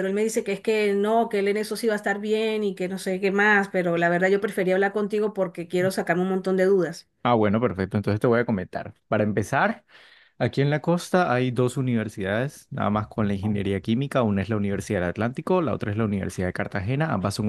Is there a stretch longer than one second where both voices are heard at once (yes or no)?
no